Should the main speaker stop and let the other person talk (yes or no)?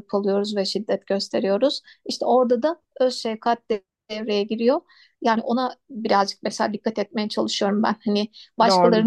no